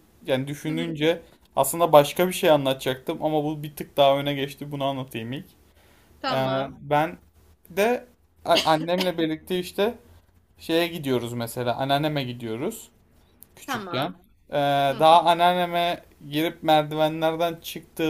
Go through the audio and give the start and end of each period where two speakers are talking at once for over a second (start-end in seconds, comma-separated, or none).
none